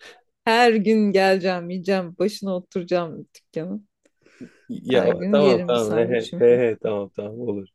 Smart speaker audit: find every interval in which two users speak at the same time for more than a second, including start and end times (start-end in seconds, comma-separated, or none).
4.9-6.4